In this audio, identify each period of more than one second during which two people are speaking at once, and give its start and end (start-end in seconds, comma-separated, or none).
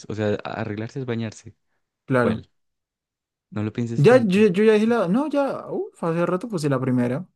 none